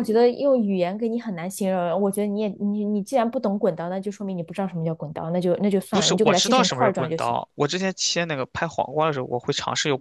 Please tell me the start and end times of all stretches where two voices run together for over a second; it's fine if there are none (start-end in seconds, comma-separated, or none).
5.9-7.4